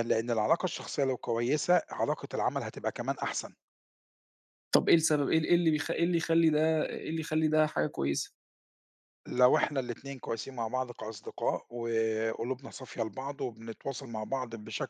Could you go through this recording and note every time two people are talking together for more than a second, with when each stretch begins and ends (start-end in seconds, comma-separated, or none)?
none